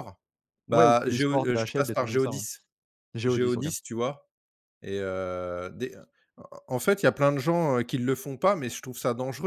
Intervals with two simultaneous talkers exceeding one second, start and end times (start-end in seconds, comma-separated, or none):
0.7-2.4